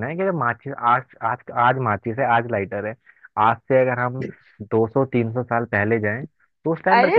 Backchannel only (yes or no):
no